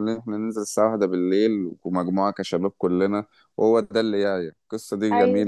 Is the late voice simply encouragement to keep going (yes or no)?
yes